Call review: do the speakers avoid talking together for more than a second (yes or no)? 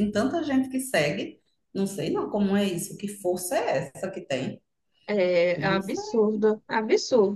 yes